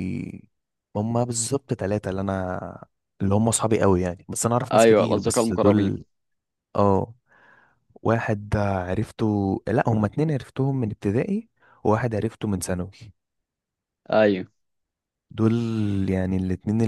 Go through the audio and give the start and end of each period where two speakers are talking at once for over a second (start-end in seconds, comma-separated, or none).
4.7-5.9